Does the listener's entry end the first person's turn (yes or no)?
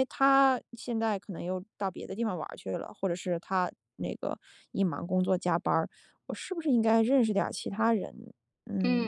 yes